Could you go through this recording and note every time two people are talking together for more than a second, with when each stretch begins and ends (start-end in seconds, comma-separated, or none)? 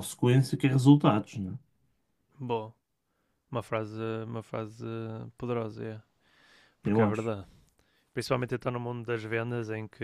none